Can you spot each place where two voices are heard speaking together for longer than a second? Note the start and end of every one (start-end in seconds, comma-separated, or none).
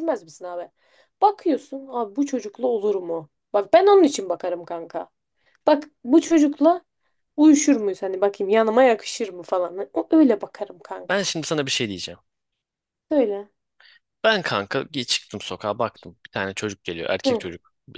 none